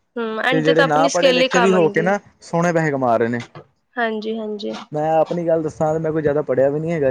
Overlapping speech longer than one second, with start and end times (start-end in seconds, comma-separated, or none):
0.5-2.0